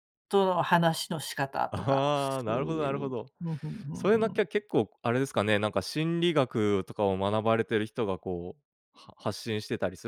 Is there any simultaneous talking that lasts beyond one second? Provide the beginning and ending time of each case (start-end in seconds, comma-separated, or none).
1.7-3.3